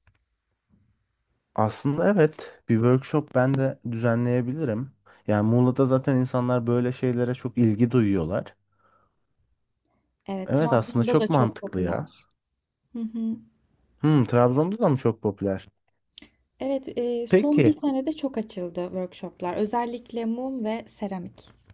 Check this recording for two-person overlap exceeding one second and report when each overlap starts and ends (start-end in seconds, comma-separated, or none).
10.4-12.1